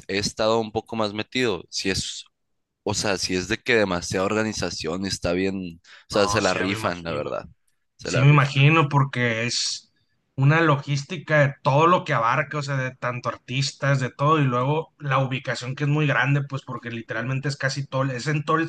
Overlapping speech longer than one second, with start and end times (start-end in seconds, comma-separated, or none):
6.1-7.3